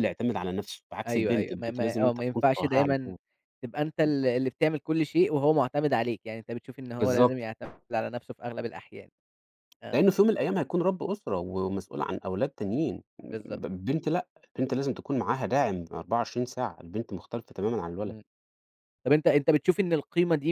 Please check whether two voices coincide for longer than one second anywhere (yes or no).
yes